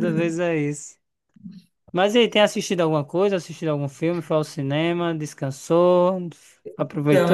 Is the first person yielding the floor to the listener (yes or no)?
yes